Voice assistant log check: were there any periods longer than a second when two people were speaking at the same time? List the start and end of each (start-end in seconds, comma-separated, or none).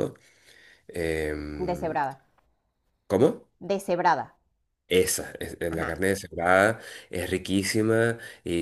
none